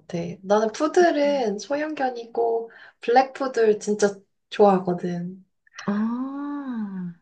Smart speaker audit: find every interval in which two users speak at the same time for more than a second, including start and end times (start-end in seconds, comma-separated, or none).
none